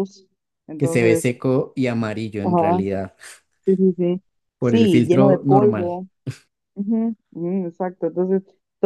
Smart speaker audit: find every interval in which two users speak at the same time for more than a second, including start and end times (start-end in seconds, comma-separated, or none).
4.6-6.0